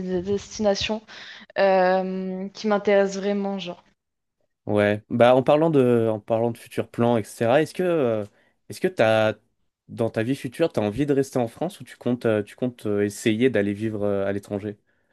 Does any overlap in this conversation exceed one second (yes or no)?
no